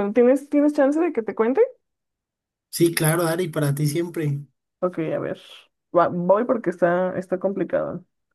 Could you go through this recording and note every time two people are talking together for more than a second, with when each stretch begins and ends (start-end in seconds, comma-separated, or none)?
none